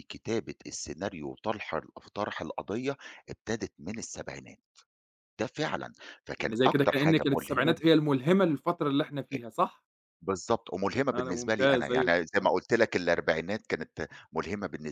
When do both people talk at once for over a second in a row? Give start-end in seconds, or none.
6.4-7.8, 11.1-12.5